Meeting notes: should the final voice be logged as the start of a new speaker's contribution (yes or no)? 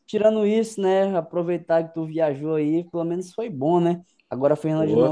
no